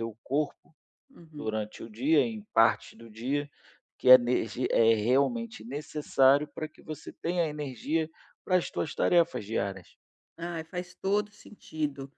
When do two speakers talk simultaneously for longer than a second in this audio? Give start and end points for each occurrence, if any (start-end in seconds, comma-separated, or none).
none